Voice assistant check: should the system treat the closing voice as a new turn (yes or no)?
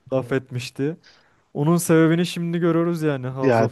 yes